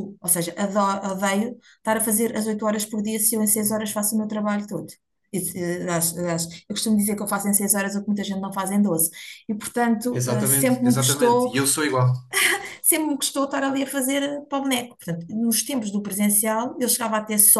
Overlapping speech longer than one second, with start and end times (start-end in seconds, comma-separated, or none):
10.1-11.5